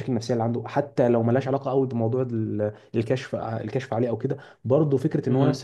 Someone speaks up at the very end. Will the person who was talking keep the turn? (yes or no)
yes